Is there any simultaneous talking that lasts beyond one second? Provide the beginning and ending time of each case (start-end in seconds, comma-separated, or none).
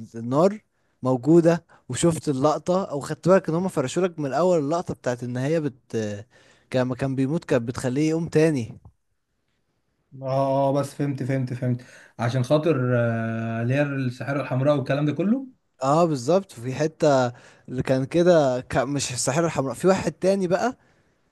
none